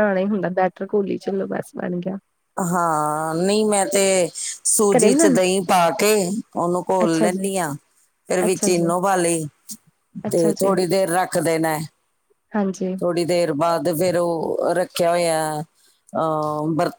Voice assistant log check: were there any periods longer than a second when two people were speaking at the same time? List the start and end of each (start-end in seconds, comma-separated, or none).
none